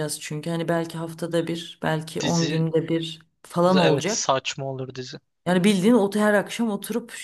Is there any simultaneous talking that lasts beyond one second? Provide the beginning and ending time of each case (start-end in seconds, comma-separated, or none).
none